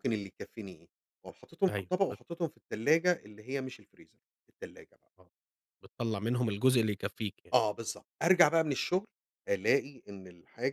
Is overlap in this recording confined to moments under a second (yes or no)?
yes